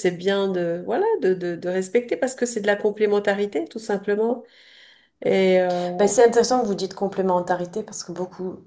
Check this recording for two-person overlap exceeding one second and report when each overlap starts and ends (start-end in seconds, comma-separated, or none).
none